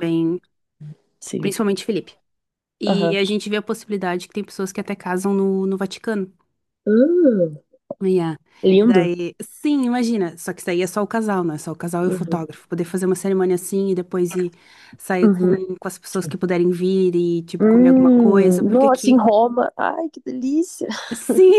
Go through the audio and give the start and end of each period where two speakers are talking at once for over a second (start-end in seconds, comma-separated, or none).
17.6-19.2